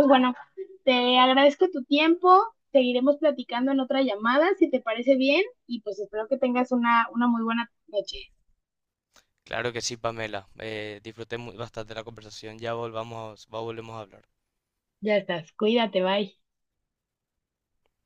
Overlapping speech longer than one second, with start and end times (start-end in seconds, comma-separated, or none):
none